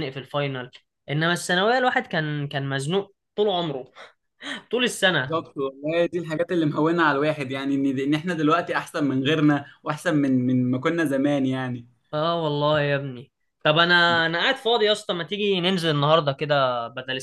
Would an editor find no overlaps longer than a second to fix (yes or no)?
yes